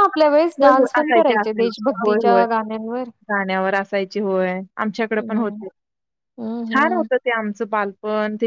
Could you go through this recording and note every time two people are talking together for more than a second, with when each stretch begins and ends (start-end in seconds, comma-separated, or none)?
0.6-2.4